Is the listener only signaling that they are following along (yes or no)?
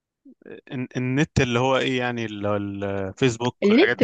no